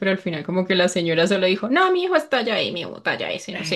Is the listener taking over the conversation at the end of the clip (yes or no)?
yes